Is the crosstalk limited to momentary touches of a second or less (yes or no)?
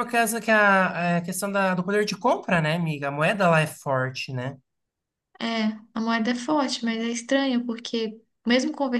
yes